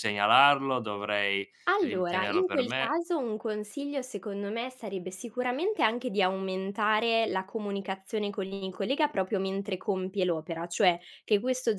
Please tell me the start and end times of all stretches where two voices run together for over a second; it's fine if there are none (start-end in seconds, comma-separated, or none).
1.7-3.0